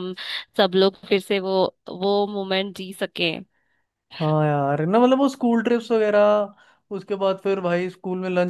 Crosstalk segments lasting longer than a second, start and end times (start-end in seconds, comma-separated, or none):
none